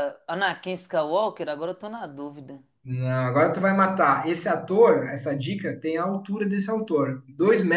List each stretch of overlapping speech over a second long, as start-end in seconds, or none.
none